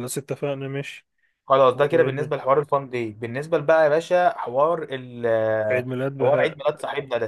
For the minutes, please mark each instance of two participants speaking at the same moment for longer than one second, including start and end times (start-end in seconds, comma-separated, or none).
none